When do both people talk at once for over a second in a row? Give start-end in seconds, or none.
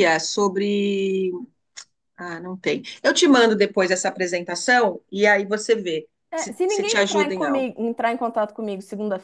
6.3-7.7